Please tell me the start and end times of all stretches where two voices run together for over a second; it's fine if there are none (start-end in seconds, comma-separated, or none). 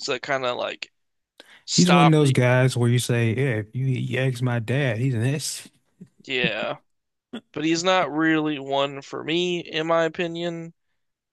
none